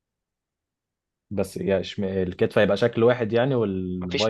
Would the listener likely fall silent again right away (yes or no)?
no